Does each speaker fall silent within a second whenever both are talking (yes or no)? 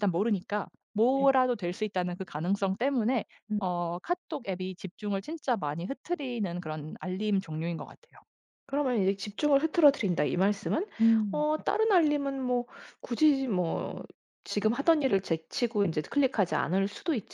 yes